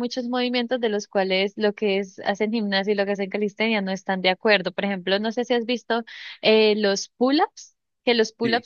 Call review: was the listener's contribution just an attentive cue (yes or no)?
yes